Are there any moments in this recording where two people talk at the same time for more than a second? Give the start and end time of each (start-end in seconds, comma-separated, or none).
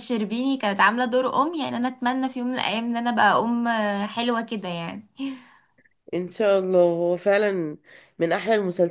none